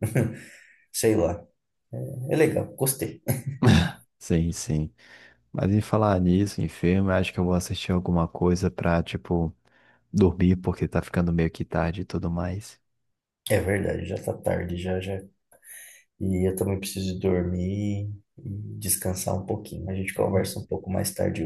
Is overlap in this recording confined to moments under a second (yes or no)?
yes